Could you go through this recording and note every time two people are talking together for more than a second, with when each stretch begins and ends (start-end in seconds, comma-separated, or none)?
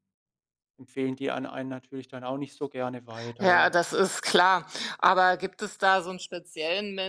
none